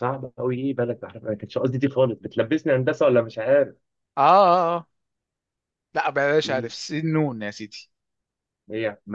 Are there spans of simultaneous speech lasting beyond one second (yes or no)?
no